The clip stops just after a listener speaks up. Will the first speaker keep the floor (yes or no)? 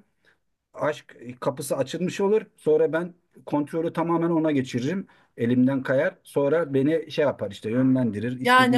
no